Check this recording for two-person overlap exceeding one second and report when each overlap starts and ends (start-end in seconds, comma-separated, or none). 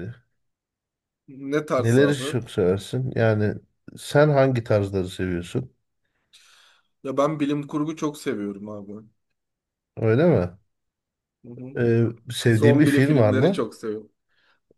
12.5-13.7